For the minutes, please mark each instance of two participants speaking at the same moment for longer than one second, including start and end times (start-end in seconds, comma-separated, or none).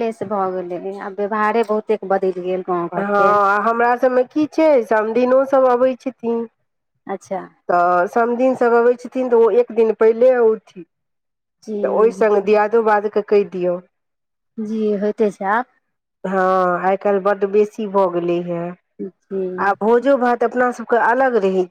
none